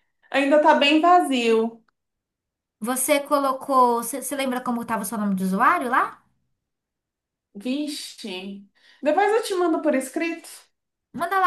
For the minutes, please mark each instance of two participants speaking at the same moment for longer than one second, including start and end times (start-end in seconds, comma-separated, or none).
none